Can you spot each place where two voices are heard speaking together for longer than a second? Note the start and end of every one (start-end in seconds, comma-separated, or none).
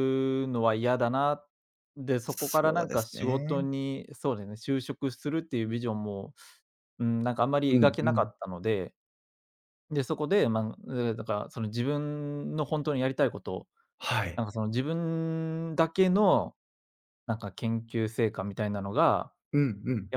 2.3-3.6